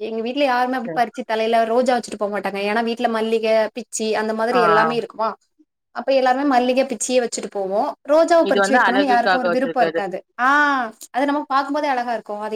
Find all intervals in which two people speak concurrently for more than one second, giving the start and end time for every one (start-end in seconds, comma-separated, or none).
8.5-10.0